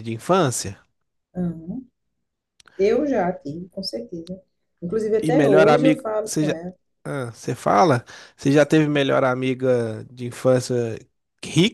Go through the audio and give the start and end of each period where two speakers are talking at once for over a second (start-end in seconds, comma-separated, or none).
5.2-6.5